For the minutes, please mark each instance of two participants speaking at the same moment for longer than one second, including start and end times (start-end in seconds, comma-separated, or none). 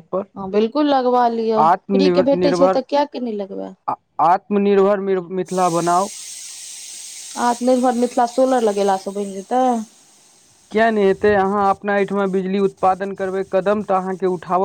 none